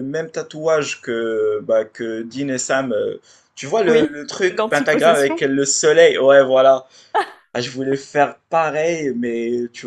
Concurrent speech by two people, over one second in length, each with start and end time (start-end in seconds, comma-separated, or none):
3.9-5.5